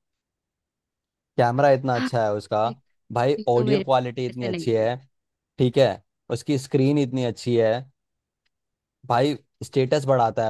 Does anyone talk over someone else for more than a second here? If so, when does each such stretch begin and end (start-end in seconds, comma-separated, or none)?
3.4-4.8